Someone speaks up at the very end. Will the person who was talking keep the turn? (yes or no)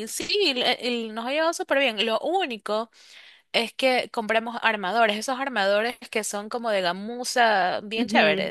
no